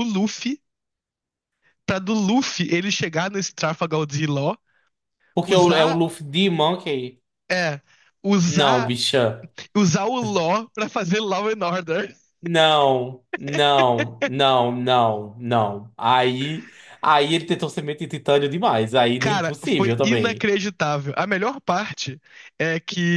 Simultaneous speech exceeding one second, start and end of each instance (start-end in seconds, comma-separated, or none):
19.2-20.5